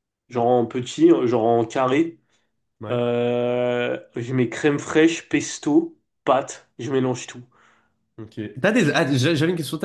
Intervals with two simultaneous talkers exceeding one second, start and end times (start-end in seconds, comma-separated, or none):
none